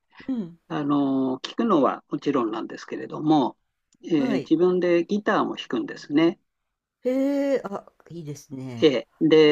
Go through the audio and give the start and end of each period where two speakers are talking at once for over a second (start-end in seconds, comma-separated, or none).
none